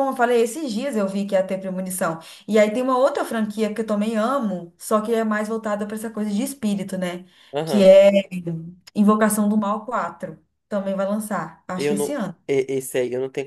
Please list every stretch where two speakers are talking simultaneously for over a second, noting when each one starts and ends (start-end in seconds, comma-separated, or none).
none